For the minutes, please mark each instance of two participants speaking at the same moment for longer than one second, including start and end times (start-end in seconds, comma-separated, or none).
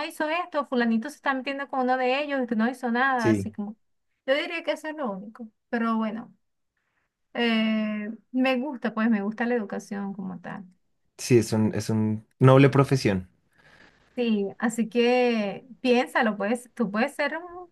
none